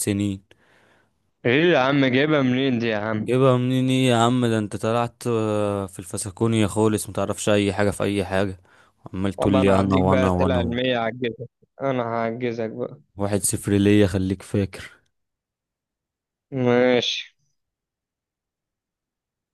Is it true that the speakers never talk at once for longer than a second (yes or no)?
no